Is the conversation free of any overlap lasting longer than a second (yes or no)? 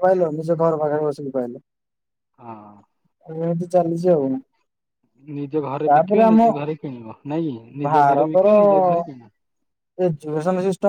yes